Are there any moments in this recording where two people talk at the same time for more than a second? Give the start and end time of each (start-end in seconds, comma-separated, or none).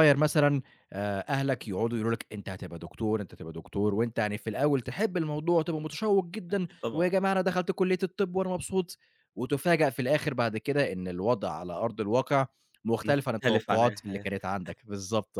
13.0-14.3